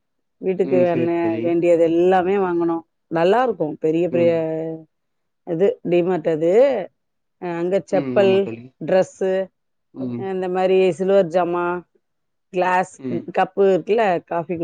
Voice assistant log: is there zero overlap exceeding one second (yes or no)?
yes